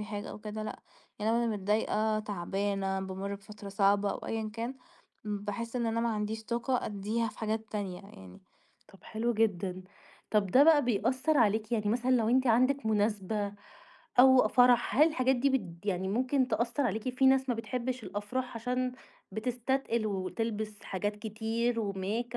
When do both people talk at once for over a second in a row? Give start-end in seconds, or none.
none